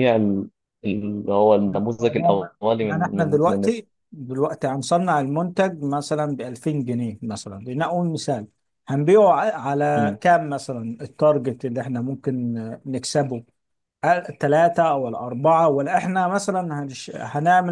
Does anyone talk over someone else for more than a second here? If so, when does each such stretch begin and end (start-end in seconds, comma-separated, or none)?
2.0-3.6